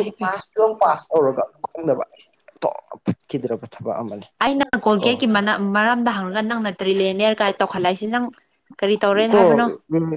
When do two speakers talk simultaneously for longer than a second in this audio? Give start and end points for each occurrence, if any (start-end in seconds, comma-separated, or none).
none